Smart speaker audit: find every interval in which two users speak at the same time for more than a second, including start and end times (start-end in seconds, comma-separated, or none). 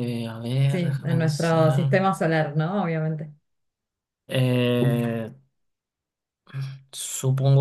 0.7-1.9